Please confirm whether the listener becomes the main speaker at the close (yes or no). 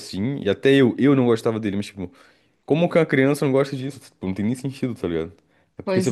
no